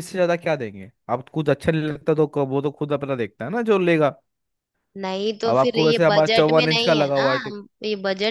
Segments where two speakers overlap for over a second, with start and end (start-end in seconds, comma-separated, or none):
5.5-7.5